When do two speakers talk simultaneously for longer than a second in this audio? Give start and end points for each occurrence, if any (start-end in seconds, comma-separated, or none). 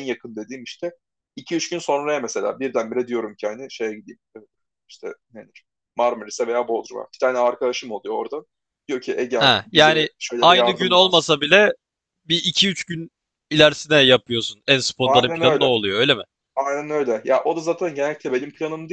9.4-11.3